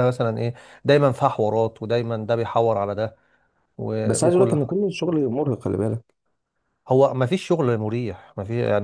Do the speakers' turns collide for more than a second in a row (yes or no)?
no